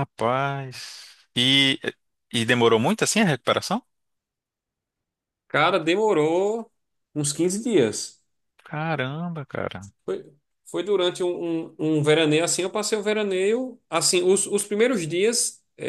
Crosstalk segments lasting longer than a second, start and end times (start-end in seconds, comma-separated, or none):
none